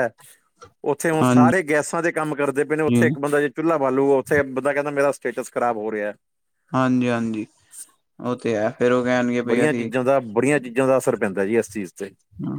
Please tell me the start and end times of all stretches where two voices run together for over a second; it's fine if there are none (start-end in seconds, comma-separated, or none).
none